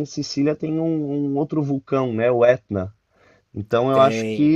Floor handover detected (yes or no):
no